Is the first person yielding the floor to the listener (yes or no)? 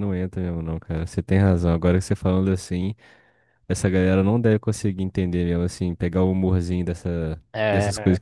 yes